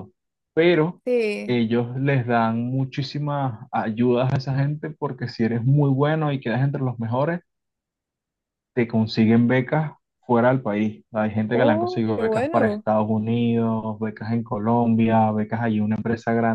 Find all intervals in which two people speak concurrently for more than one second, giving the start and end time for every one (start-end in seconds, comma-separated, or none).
11.5-12.9